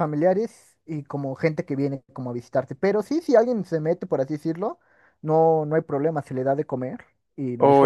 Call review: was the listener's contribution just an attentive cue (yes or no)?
no